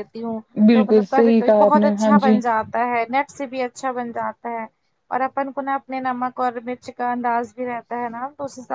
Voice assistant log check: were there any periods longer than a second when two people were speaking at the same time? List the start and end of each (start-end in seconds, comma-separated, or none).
0.7-2.4